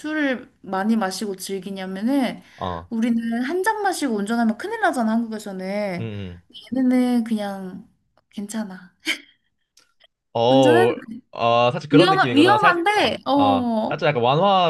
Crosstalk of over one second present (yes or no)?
yes